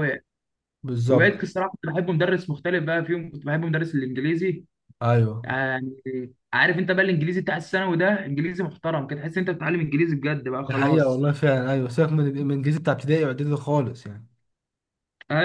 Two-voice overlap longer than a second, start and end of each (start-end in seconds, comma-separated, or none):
none